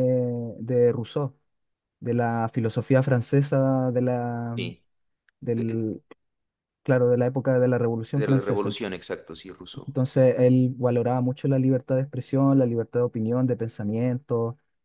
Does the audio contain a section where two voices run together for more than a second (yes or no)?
no